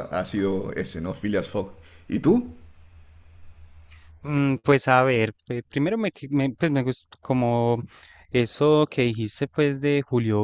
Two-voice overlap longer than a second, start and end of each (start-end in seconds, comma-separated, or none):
none